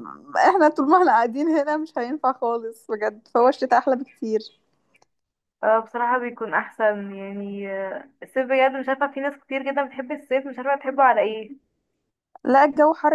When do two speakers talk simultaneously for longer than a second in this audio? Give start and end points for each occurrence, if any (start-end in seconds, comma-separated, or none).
none